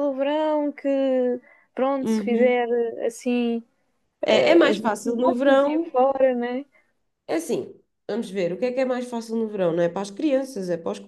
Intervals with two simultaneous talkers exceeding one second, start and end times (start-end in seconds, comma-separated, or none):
4.3-5.9